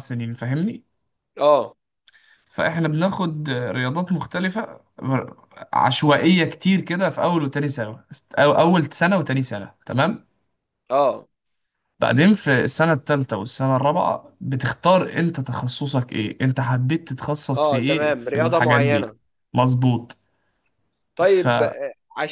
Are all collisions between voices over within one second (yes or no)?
no